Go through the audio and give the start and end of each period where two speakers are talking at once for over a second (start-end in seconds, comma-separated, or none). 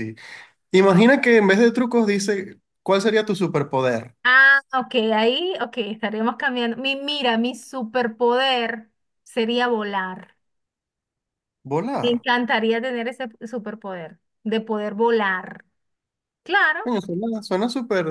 none